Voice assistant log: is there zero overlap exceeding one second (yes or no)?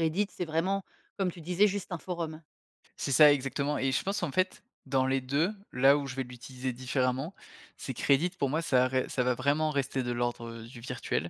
yes